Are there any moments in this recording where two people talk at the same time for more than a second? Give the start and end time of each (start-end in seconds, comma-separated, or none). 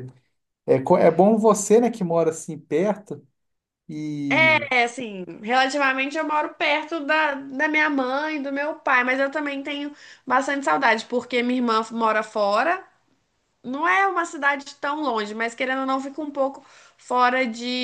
none